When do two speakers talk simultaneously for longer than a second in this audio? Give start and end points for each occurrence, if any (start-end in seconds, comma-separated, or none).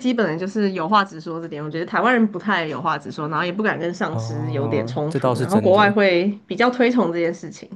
4.1-5.9